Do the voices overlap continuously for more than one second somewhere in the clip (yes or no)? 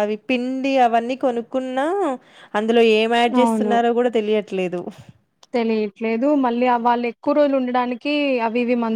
no